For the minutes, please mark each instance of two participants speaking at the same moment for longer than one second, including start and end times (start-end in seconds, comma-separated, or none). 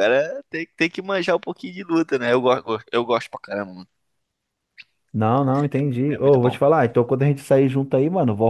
none